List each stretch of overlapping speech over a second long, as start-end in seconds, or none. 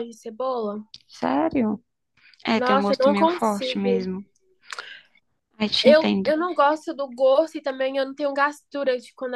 2.5-4.0